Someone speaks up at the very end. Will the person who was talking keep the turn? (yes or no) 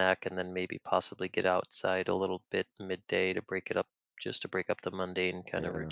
no